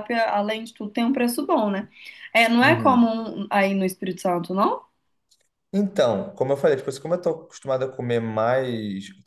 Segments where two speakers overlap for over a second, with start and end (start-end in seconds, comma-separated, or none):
none